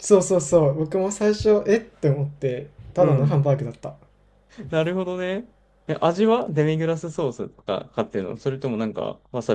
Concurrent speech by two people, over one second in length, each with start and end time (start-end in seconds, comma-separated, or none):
none